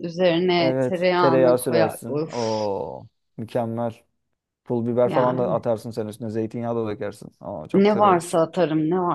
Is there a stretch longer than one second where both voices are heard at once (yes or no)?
yes